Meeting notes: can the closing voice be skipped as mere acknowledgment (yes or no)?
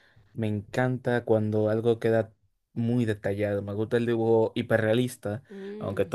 yes